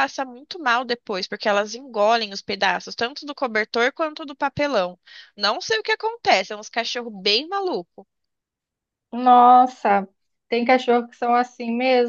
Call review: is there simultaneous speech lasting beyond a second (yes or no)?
no